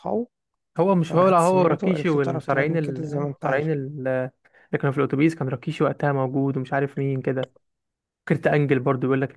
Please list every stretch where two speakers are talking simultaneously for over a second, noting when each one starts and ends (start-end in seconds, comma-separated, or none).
1.1-3.7